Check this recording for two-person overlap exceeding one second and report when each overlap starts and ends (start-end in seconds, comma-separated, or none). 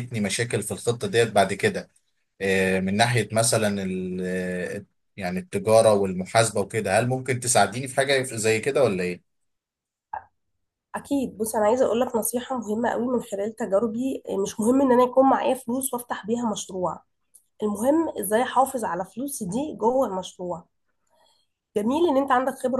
none